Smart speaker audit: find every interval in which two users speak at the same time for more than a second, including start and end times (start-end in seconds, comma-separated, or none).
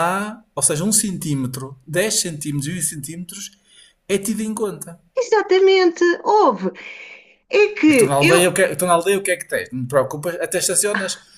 none